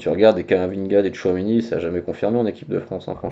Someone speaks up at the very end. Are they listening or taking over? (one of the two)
taking over